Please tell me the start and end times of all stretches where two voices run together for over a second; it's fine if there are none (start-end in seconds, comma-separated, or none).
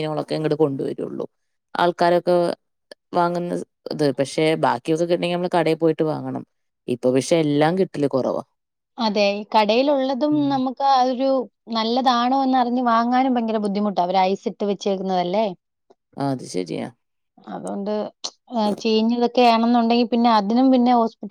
none